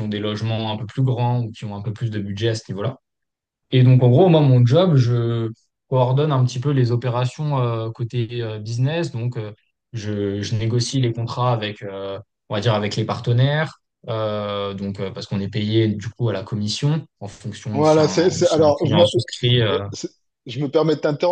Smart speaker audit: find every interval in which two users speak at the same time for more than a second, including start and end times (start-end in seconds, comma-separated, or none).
17.7-19.0